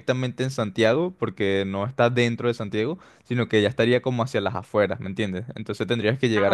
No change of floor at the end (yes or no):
yes